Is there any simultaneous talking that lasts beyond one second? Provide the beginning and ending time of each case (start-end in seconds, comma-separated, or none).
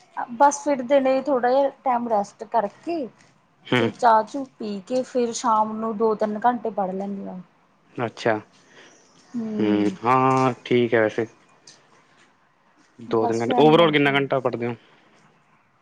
13.2-14.6